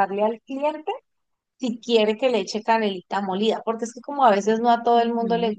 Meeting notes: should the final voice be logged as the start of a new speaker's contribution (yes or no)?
yes